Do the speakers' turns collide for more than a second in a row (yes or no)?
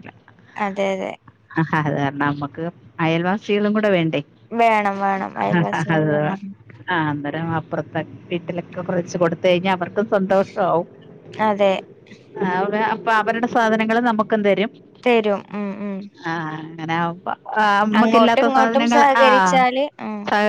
yes